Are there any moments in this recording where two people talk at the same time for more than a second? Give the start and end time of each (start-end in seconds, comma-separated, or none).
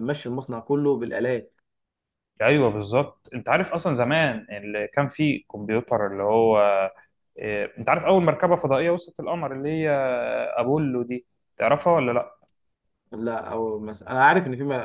none